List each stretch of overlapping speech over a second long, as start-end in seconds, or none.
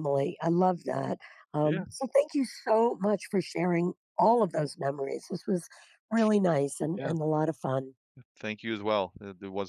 none